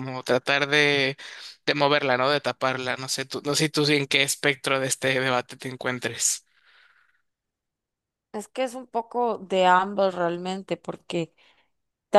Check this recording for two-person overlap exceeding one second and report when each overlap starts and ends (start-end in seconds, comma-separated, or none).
none